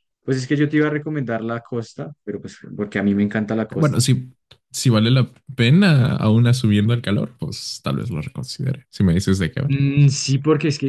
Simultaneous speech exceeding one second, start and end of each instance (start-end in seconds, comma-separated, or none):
none